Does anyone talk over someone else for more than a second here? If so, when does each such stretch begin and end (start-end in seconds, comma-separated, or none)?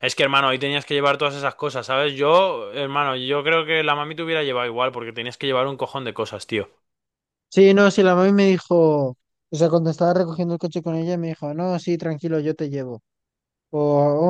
none